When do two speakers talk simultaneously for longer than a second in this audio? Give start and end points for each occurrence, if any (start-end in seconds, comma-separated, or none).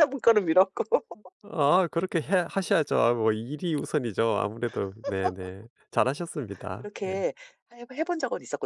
none